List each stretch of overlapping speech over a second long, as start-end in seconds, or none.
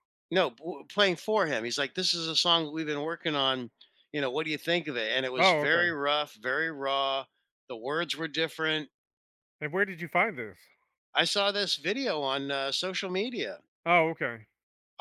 none